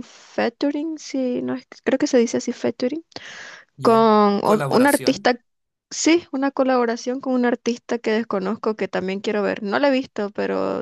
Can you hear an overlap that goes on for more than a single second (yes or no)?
yes